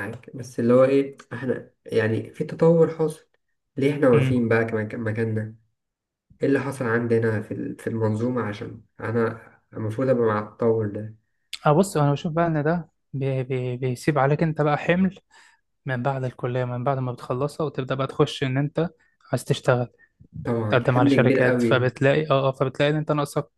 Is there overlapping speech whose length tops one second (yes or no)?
yes